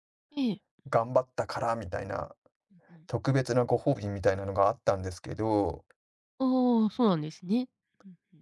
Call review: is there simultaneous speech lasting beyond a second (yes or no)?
no